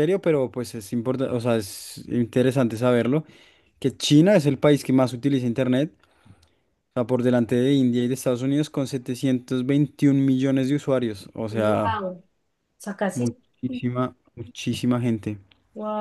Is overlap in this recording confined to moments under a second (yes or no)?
yes